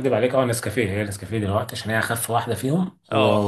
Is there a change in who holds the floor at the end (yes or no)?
no